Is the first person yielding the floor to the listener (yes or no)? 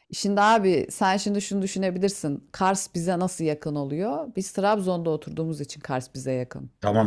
yes